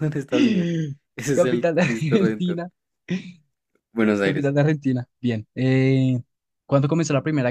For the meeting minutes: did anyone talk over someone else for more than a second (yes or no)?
yes